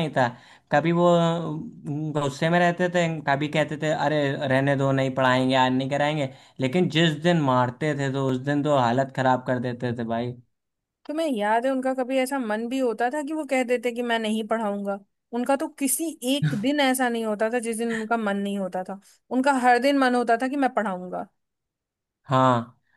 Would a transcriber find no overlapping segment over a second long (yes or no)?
yes